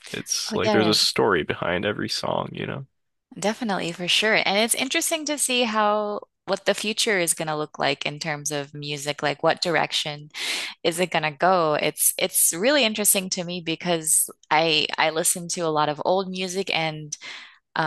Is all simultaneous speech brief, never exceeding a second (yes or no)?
yes